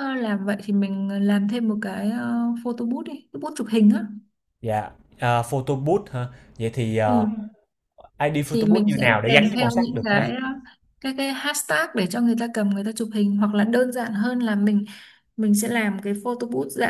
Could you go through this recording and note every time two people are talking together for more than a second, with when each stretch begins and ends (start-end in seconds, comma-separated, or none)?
8.5-10.2